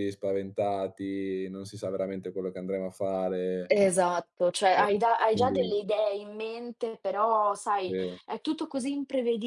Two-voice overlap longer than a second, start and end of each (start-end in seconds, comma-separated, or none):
none